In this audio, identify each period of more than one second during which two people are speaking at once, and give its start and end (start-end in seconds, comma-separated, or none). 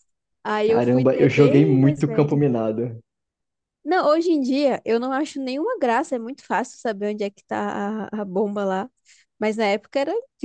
0.6-2.4